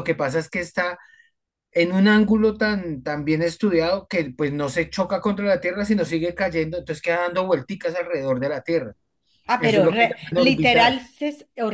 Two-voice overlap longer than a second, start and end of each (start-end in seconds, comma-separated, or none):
9.6-11.0